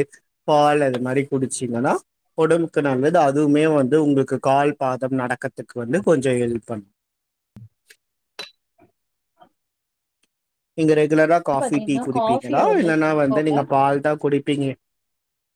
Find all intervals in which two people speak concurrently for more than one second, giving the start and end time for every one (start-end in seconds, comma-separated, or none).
11.6-13.6